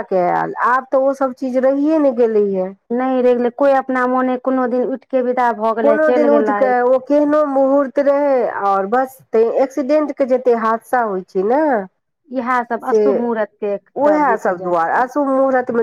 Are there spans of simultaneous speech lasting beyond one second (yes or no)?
yes